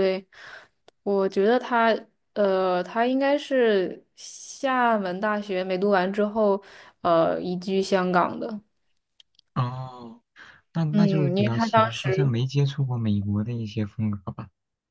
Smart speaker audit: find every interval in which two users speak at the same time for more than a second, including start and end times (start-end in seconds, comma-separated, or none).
10.9-12.3